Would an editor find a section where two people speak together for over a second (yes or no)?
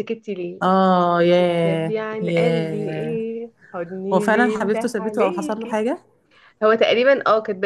yes